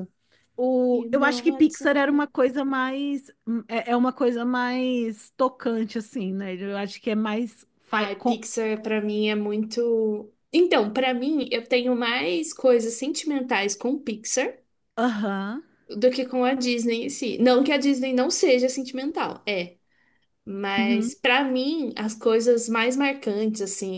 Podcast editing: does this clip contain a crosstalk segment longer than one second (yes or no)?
yes